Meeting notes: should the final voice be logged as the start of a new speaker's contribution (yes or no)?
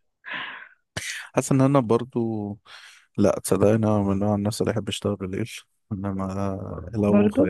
no